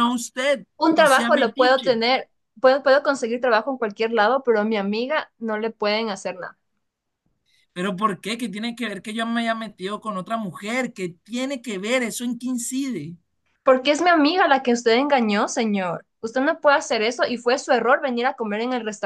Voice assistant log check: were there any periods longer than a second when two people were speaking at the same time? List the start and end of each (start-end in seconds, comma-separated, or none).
0.8-2.0